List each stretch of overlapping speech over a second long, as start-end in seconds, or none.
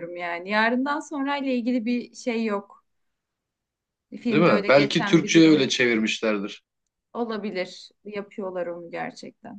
4.3-5.7